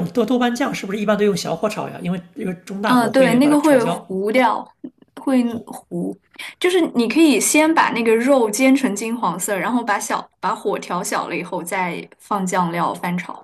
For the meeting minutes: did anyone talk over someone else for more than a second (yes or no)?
yes